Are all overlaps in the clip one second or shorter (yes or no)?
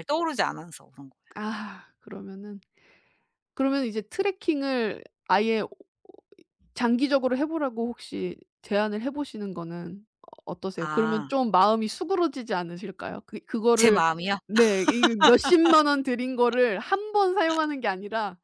yes